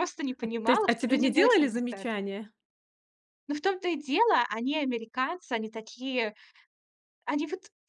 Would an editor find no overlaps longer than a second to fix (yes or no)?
no